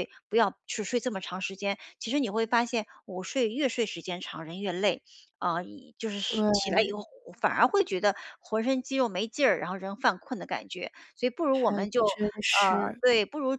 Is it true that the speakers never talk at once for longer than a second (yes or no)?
no